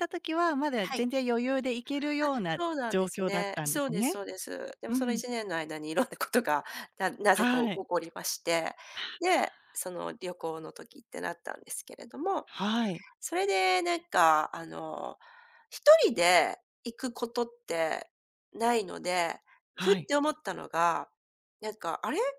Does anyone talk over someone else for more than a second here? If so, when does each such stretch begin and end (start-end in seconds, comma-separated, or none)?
2.2-4.1